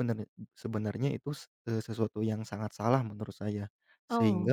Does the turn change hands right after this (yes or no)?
no